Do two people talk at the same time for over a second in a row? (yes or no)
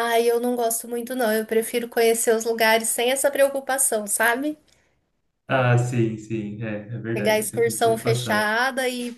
yes